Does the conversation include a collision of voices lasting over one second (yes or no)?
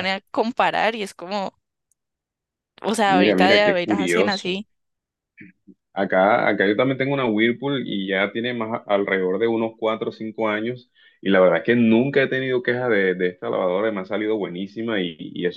yes